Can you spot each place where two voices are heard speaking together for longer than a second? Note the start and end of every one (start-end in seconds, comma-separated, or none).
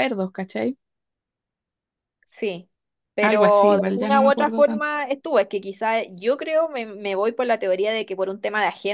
3.2-4.9